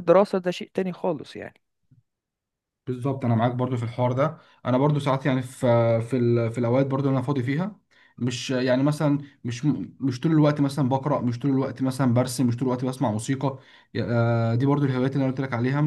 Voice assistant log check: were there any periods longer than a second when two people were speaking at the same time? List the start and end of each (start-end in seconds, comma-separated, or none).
none